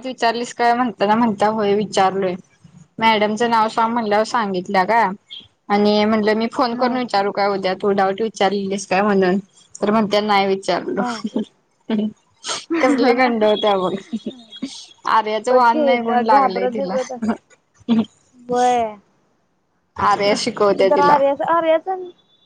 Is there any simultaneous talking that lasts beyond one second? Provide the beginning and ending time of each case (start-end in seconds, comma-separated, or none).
15.5-16.9